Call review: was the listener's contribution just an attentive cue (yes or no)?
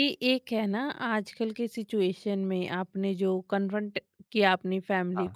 yes